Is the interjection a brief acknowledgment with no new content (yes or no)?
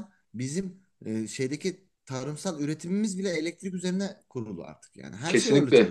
no